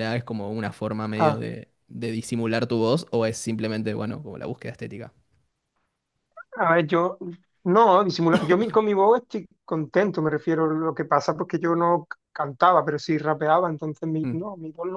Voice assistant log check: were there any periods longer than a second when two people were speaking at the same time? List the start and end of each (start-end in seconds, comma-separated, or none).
none